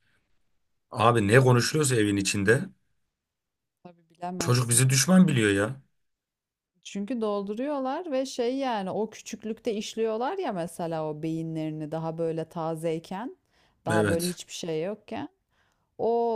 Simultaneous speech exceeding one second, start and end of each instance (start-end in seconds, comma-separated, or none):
none